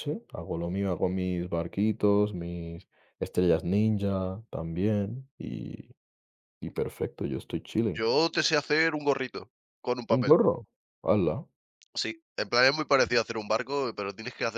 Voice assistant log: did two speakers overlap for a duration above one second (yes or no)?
no